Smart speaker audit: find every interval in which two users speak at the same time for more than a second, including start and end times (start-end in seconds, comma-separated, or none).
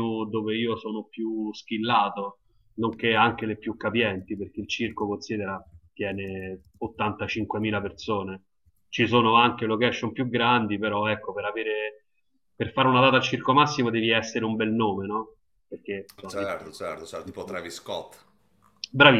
none